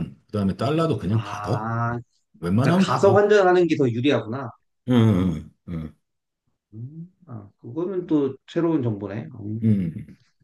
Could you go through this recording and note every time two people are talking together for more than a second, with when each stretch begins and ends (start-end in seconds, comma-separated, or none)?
none